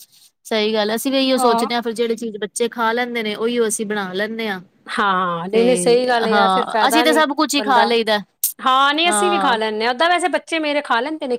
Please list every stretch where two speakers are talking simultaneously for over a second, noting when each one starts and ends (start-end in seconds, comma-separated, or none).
5.5-7.9